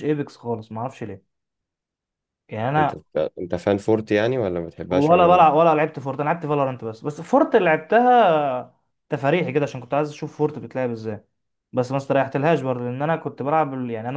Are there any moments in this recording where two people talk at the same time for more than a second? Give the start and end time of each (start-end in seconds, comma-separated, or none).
none